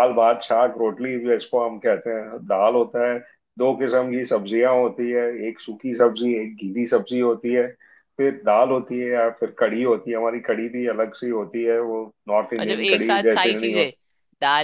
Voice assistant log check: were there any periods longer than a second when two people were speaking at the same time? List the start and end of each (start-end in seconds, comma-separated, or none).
12.6-13.9